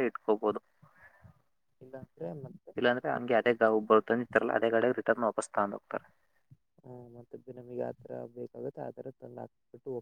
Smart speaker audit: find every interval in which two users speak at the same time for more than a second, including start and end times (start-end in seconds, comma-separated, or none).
none